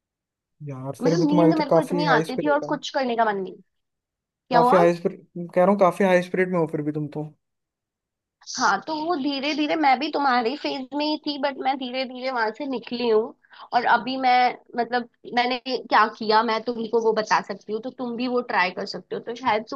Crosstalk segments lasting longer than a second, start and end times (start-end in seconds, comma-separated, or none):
1.0-2.8